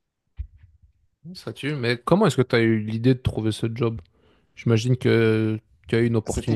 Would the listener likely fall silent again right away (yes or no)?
no